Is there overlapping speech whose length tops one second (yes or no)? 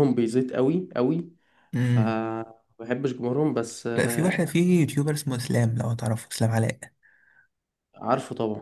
no